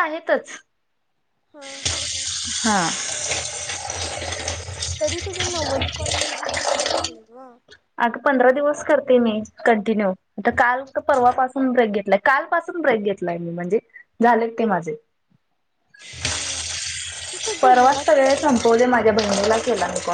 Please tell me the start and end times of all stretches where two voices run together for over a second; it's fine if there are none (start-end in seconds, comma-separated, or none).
17.6-19.2